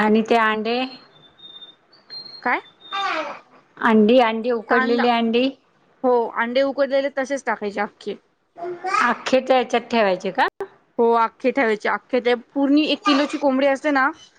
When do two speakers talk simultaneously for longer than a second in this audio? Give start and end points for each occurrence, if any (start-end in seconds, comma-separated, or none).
none